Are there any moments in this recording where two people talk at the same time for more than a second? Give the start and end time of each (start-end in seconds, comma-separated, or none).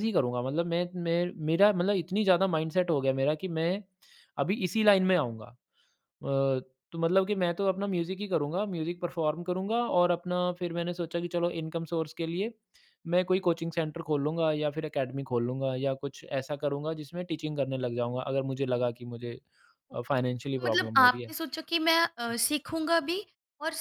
19.9-21.3